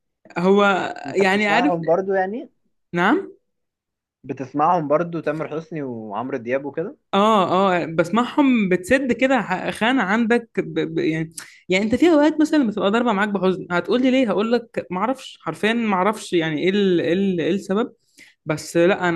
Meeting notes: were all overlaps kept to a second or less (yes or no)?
yes